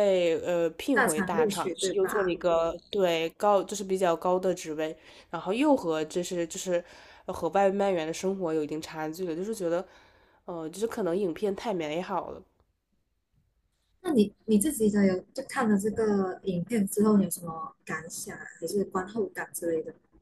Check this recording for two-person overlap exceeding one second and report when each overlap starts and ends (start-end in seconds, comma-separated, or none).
0.9-2.4